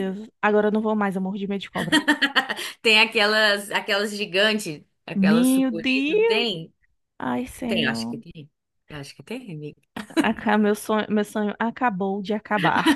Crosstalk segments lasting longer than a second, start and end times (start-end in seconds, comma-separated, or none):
5.1-6.5